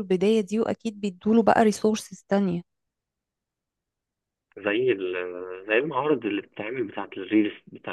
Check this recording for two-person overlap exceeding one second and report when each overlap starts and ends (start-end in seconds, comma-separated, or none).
none